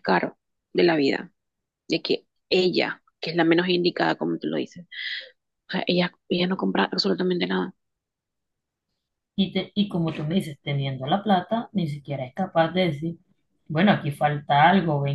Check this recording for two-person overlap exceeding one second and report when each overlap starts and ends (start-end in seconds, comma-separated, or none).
none